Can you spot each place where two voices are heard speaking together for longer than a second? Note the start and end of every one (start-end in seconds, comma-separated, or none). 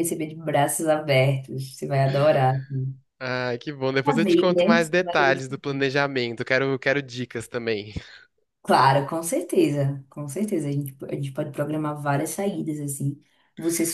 4.0-5.8